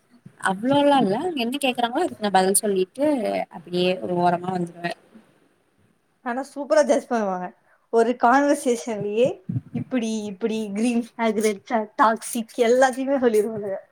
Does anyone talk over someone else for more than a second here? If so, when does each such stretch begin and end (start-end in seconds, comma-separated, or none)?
none